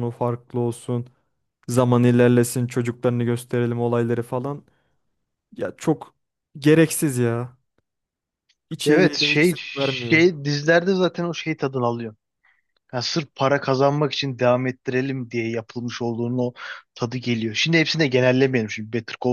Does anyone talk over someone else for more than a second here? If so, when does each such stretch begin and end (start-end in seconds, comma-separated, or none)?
8.8-10.2